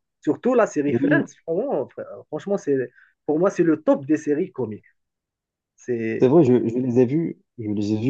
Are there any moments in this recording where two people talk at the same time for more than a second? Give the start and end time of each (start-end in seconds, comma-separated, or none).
none